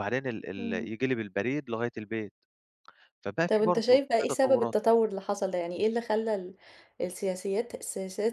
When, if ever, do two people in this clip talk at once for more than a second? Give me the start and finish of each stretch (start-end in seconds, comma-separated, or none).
3.5-4.8